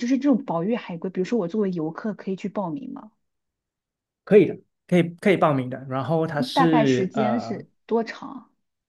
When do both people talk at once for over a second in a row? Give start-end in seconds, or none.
6.3-7.7